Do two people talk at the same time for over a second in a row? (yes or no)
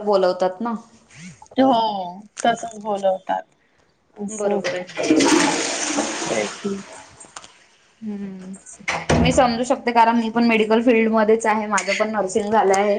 no